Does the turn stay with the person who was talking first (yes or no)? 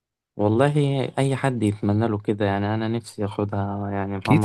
no